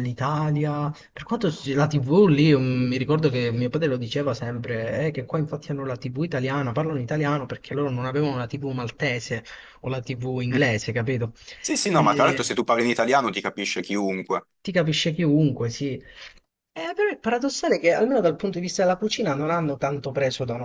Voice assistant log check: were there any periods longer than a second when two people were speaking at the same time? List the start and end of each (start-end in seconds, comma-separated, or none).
none